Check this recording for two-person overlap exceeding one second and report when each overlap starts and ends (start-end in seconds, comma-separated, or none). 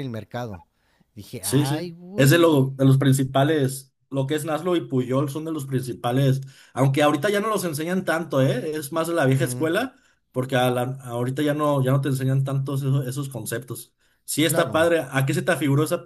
1.4-2.7